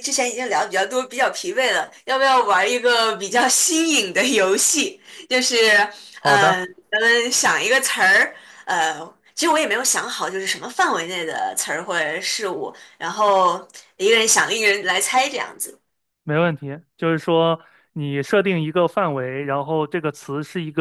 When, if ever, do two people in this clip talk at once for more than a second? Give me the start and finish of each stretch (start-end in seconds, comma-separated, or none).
none